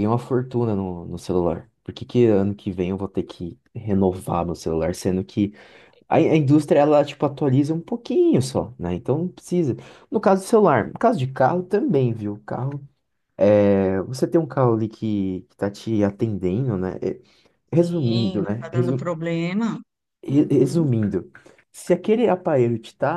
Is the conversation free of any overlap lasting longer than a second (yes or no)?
no